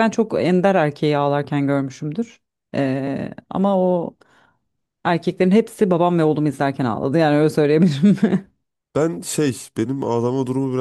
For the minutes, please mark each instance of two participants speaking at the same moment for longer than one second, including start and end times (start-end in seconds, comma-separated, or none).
none